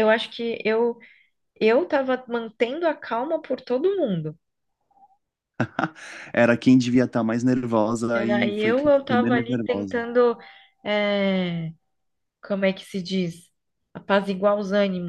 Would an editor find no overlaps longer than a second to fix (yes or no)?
no